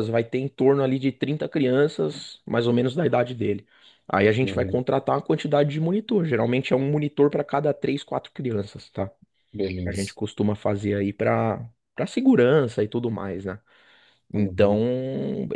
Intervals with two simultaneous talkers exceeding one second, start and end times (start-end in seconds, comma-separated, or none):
none